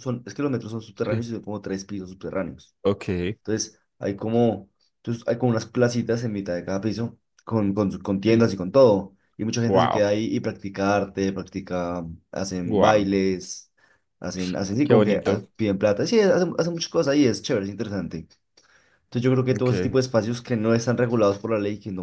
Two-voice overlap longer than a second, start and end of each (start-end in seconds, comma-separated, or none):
none